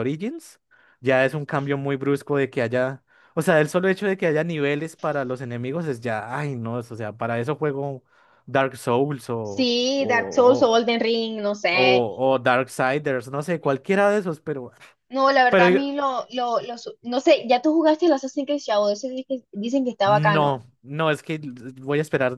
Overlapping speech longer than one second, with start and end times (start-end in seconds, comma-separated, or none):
9.4-10.8